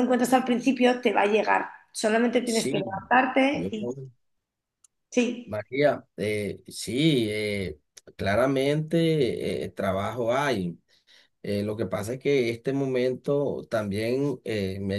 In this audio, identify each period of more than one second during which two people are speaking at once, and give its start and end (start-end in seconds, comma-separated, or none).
none